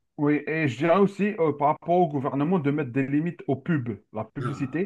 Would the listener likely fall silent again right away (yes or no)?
yes